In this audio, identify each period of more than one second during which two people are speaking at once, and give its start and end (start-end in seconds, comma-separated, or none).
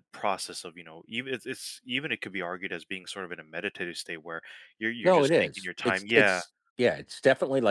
5.0-6.4